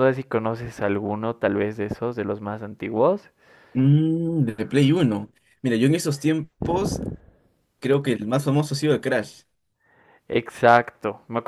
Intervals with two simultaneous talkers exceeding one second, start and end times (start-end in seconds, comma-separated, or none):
none